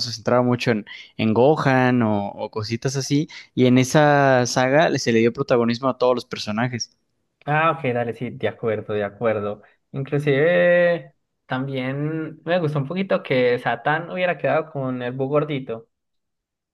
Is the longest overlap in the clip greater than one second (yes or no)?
no